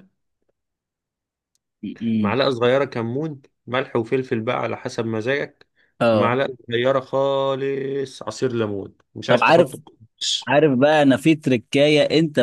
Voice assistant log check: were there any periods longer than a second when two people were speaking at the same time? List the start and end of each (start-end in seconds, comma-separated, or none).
none